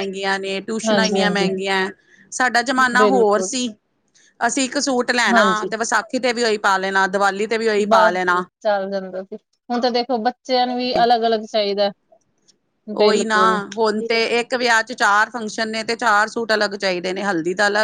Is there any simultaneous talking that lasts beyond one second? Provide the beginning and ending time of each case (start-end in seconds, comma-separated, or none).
none